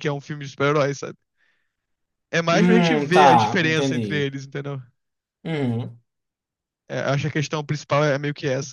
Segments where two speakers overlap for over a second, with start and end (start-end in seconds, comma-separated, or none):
2.5-4.3